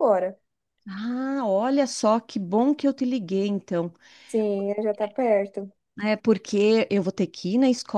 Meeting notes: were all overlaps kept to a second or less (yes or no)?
yes